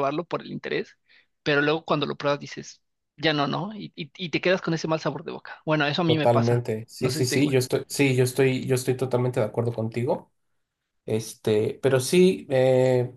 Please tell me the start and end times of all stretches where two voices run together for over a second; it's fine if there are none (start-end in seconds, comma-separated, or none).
6.0-7.6